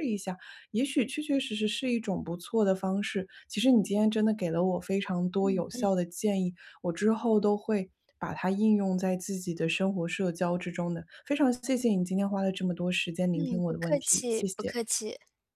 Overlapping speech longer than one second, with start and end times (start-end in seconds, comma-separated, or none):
13.3-14.8